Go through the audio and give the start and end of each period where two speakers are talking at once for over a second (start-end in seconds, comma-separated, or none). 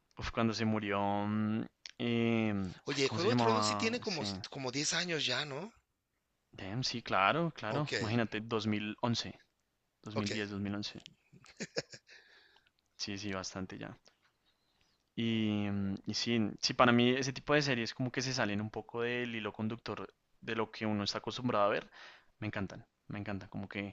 2.9-4.2